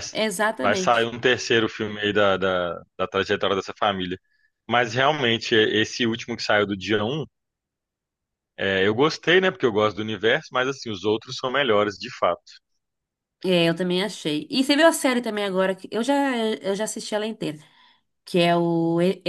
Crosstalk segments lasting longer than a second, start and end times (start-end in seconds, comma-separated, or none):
none